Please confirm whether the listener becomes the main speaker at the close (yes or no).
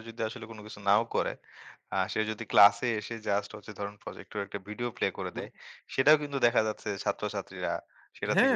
yes